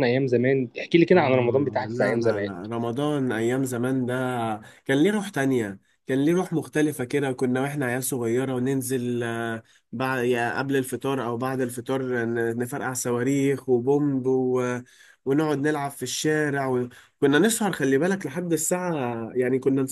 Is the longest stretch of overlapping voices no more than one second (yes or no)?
no